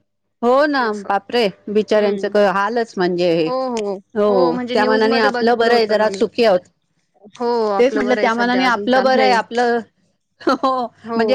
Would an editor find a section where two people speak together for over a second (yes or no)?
yes